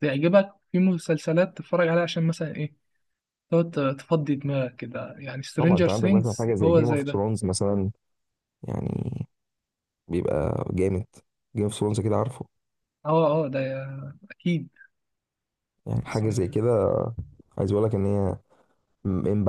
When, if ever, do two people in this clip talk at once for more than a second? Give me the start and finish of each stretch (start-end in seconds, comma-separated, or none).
5.6-7.2